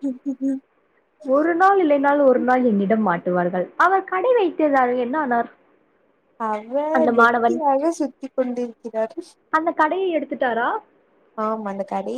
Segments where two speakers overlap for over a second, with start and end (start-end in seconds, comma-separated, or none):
none